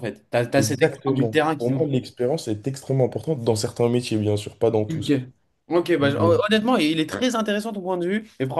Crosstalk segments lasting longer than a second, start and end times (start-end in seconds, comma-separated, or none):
0.6-1.9